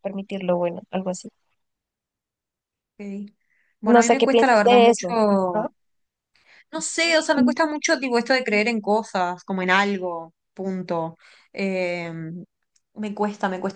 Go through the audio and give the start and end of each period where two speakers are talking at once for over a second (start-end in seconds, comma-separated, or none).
3.8-5.7